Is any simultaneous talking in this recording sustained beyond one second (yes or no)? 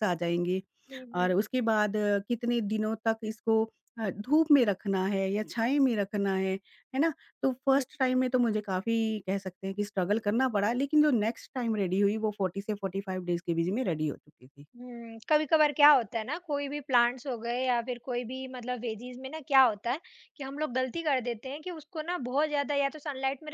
no